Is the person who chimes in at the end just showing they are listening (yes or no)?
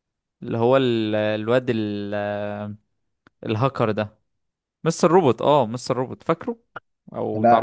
no